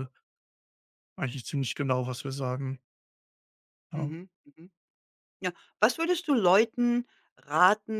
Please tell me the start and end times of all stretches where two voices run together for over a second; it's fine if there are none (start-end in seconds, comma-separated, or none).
none